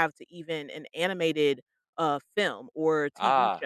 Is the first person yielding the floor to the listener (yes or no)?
yes